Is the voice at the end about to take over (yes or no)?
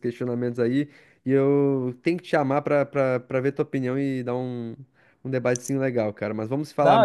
yes